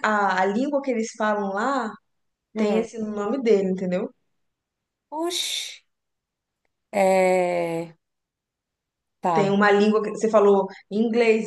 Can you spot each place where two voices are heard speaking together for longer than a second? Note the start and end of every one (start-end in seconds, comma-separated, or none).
none